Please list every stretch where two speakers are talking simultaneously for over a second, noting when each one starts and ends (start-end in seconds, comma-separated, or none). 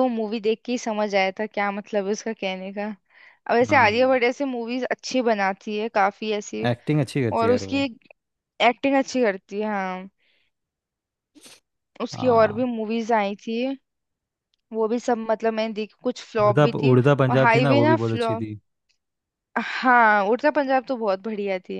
16.4-18.4